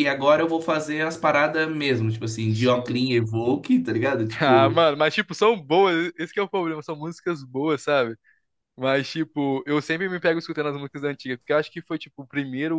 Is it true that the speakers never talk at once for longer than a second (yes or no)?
yes